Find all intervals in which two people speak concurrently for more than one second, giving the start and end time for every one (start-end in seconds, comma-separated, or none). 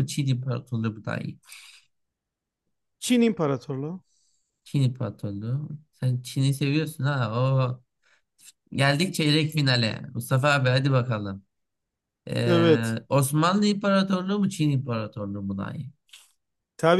none